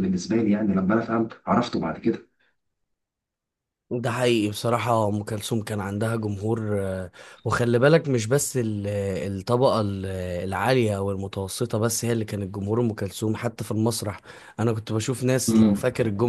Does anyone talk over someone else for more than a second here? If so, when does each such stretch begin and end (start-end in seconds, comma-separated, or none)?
none